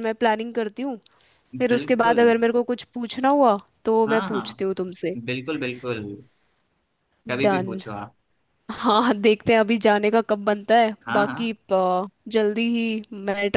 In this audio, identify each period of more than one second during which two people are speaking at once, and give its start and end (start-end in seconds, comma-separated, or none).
none